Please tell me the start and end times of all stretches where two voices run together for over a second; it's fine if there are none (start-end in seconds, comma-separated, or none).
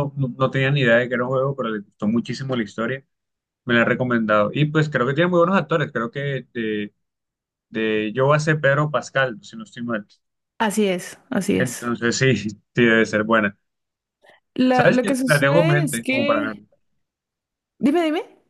14.7-16.5